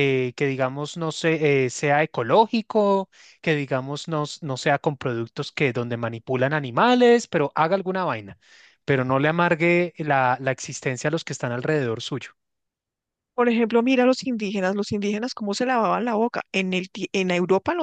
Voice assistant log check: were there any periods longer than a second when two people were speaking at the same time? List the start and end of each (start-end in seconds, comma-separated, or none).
none